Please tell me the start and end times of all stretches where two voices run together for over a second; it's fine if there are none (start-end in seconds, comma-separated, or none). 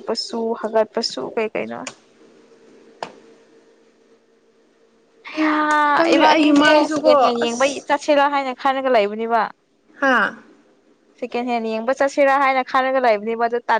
6.1-7.8